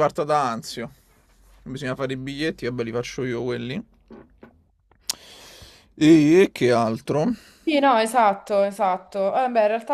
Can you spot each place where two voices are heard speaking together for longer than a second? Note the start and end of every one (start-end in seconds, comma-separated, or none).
none